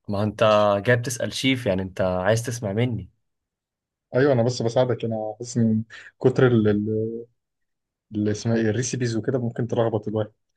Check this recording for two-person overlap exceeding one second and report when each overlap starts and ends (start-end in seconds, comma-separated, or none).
none